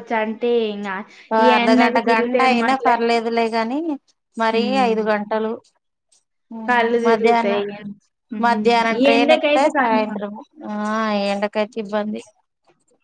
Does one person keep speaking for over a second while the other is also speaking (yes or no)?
yes